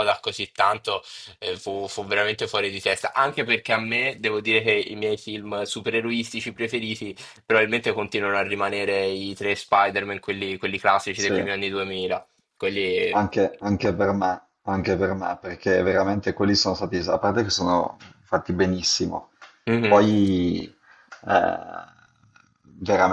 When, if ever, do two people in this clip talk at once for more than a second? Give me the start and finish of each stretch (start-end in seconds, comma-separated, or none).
none